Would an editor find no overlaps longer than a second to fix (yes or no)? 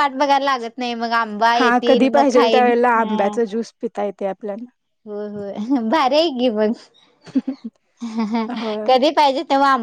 no